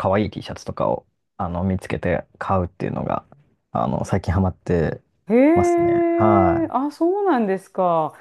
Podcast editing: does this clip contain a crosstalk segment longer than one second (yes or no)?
no